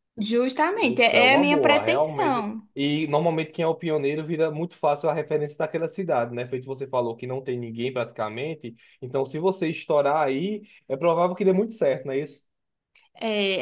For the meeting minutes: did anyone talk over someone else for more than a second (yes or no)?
yes